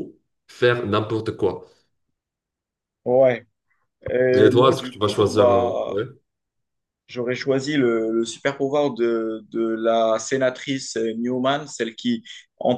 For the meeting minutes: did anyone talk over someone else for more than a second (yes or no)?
yes